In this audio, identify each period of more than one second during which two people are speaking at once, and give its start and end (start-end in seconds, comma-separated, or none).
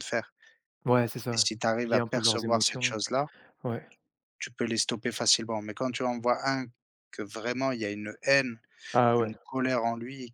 1.3-3.0